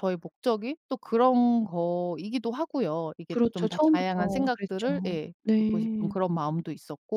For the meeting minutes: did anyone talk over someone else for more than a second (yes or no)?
yes